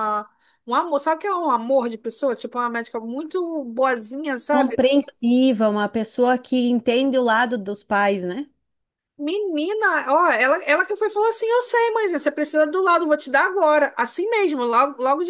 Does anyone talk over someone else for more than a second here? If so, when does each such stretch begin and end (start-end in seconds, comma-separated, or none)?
none